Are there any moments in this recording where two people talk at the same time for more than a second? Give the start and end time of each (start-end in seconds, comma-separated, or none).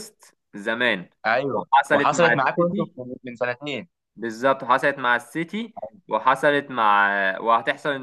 1.5-2.9